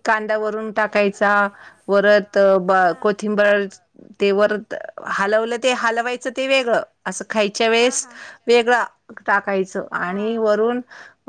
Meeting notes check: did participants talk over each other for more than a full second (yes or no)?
yes